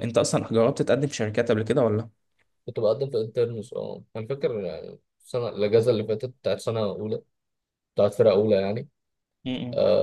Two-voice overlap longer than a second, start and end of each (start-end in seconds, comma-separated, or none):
none